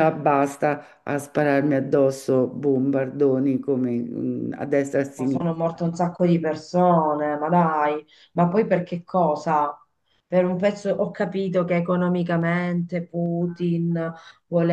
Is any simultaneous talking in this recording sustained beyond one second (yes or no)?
no